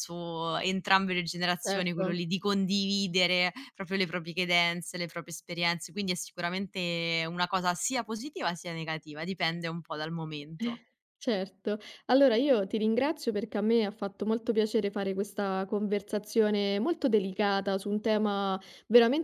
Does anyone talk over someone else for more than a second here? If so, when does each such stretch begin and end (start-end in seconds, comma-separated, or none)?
none